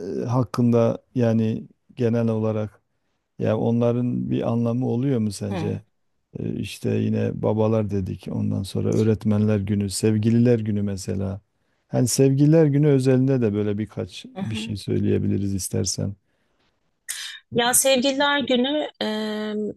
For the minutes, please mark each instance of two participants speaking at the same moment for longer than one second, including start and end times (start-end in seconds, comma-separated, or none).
none